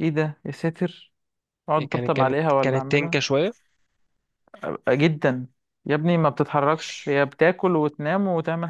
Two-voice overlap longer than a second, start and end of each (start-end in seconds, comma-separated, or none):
1.8-3.2